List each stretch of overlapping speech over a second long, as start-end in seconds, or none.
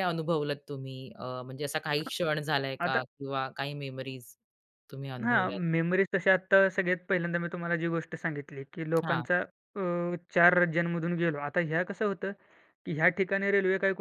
none